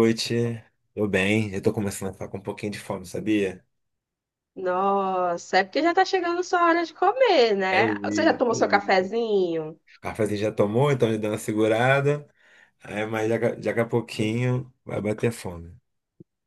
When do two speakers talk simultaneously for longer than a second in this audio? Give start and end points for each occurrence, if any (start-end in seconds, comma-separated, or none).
7.7-9.2